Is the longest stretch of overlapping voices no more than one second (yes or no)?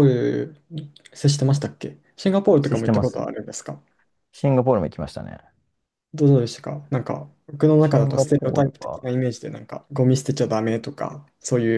no